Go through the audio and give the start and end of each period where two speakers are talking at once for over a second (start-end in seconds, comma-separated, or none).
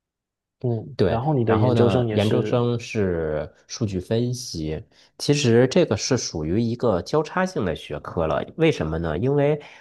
1.0-2.6